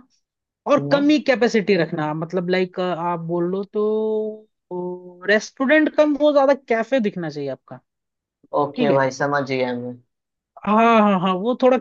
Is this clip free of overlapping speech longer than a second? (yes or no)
yes